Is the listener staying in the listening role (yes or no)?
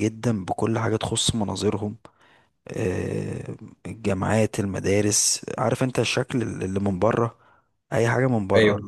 yes